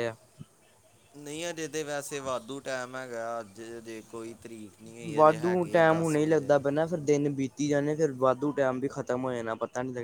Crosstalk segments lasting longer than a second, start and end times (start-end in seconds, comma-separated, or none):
5.1-6.6